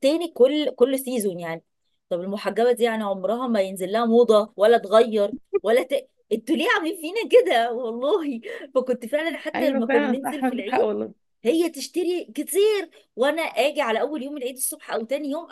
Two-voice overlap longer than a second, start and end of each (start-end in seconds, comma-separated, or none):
9.5-10.9